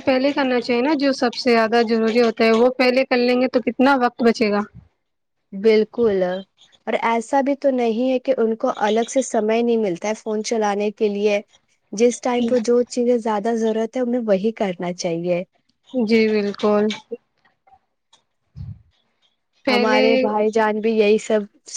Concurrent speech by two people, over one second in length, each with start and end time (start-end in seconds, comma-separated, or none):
none